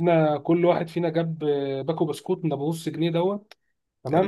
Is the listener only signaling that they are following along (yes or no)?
yes